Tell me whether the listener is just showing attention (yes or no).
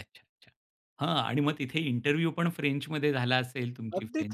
no